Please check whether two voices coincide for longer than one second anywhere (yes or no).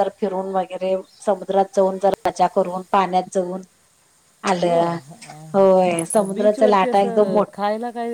yes